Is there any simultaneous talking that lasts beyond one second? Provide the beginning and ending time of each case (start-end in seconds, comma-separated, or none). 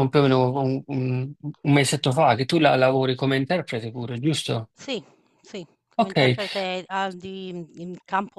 none